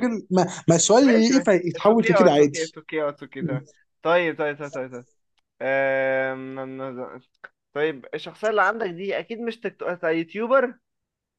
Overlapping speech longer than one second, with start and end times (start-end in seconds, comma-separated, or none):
1.0-2.8